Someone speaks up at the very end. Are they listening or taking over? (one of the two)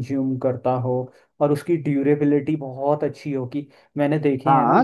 taking over